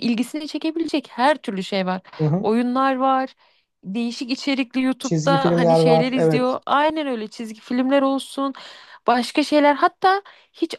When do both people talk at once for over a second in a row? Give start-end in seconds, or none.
5.0-6.6